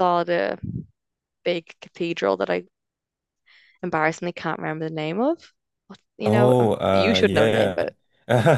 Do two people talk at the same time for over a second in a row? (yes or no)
yes